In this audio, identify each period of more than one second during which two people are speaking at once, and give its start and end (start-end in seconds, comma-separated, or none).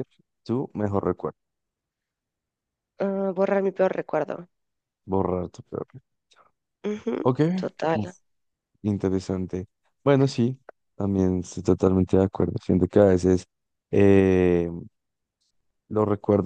none